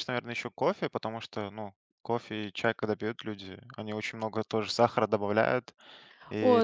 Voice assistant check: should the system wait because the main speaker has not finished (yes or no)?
no